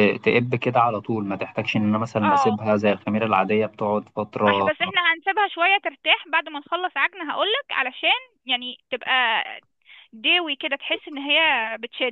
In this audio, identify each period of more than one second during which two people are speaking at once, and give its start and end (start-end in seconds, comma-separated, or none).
none